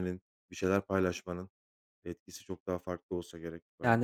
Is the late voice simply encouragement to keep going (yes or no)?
no